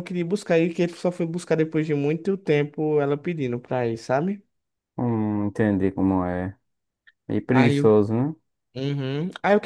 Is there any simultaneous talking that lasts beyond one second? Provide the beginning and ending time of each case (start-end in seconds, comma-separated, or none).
none